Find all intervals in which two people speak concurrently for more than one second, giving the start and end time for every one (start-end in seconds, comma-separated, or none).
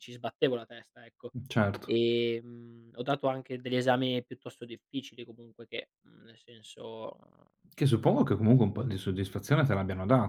none